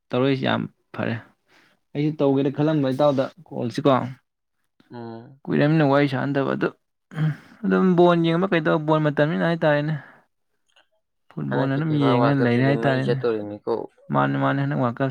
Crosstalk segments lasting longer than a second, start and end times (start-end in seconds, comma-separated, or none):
11.5-13.2